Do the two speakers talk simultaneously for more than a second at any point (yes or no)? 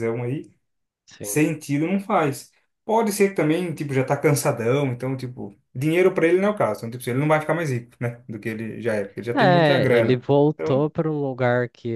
yes